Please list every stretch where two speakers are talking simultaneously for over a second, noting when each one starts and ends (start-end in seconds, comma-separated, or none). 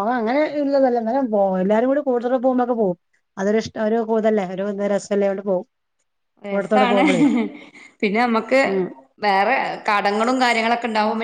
none